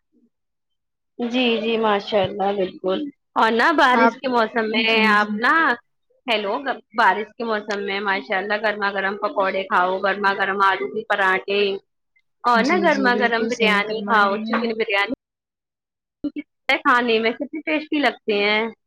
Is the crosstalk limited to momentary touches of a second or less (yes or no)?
no